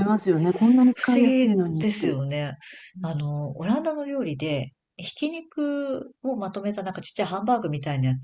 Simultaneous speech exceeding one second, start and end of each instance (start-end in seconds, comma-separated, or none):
0.9-2.2